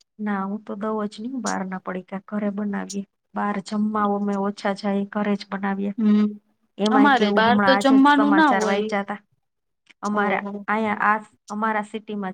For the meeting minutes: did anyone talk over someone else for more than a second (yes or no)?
yes